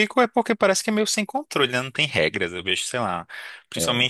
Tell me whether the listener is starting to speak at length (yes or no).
no